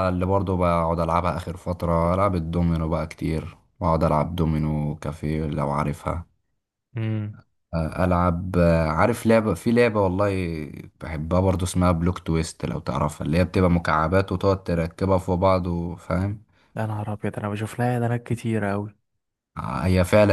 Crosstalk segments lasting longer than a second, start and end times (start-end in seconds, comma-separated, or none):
none